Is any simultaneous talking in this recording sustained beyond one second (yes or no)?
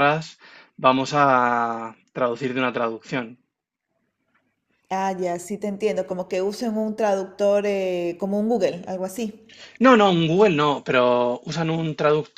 no